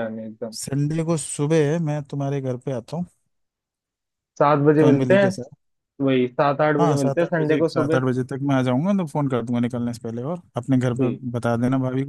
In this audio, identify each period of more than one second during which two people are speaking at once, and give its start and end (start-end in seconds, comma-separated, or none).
6.8-8.0